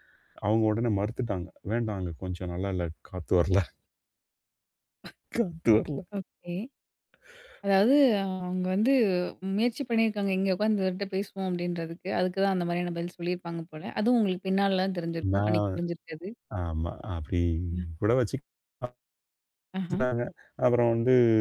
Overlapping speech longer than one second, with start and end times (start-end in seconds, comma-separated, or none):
none